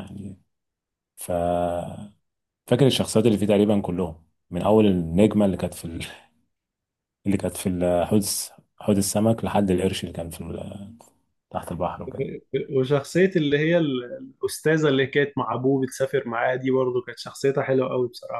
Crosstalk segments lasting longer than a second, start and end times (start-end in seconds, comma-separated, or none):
none